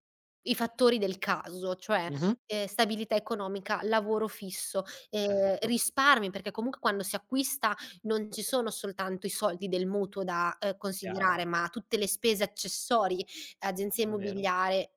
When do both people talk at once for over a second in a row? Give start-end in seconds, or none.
none